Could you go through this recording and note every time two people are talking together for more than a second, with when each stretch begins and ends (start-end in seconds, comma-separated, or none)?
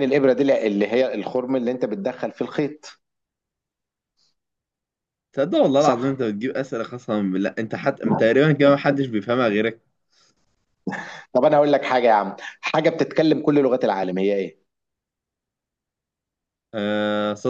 none